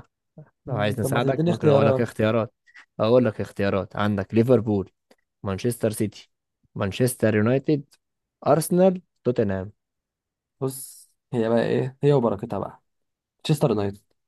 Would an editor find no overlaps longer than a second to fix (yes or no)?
no